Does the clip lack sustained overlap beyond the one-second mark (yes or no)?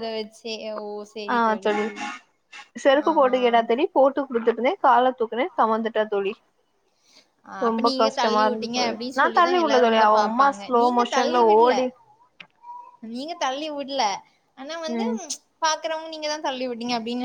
no